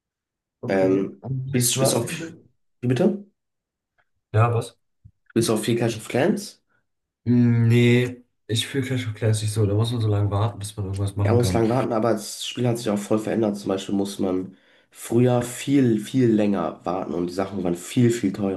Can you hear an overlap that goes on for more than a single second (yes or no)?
yes